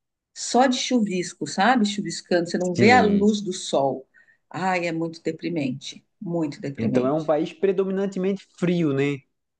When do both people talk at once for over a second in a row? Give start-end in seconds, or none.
none